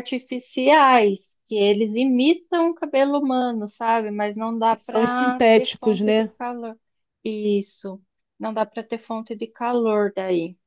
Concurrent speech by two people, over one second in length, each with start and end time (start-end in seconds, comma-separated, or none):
4.7-6.3